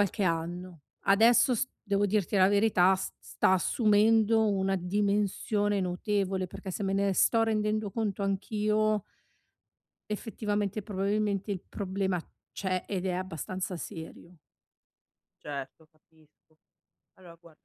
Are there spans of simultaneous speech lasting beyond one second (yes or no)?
no